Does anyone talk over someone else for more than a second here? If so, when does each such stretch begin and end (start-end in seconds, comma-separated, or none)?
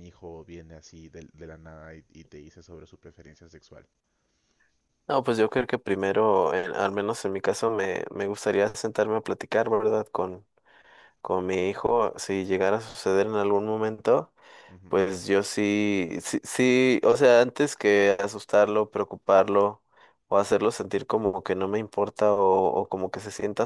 none